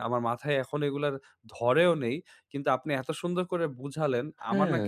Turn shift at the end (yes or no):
no